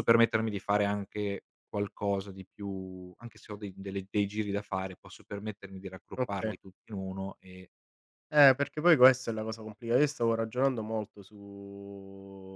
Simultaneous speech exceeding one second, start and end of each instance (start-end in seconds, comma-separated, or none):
none